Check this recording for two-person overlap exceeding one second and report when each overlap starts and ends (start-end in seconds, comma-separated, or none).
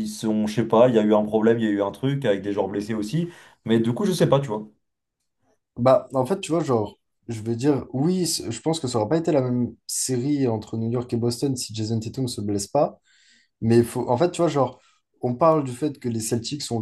none